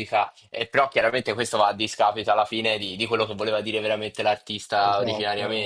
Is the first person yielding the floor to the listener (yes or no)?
yes